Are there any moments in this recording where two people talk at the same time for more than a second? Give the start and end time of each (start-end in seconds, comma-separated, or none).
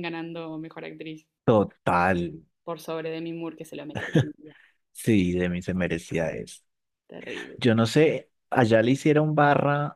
none